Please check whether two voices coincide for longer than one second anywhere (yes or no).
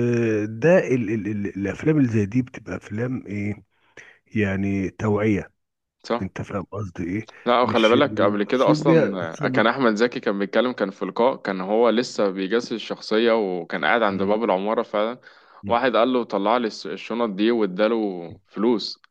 yes